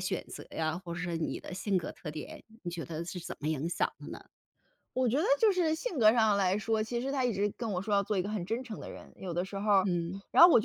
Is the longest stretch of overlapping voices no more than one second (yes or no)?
yes